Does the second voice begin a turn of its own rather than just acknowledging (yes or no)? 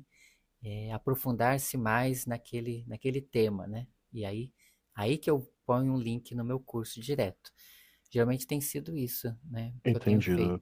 yes